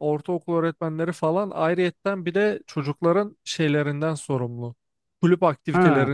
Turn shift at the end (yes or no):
no